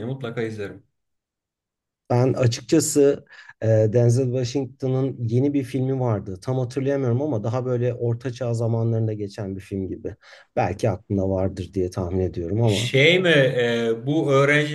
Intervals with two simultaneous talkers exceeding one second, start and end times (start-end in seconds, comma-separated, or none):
none